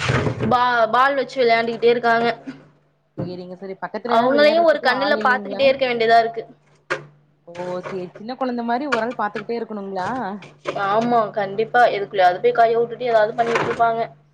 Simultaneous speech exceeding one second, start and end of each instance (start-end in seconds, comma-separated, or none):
4.2-5.6